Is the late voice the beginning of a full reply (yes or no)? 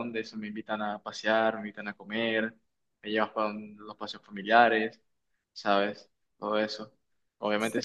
no